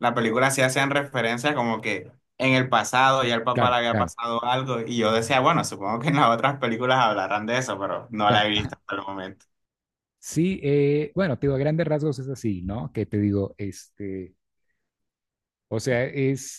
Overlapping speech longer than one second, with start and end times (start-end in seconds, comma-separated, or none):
none